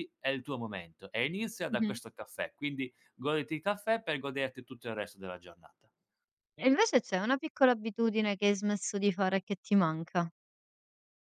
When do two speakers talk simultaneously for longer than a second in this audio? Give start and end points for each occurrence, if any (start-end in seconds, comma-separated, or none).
none